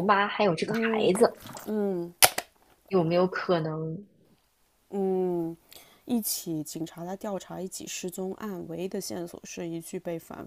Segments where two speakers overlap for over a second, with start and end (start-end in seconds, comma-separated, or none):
none